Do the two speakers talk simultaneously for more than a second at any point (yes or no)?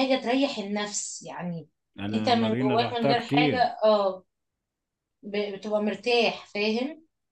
yes